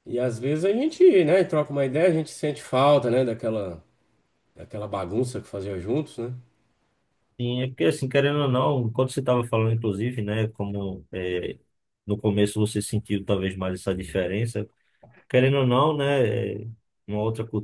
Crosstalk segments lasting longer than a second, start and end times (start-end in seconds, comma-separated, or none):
none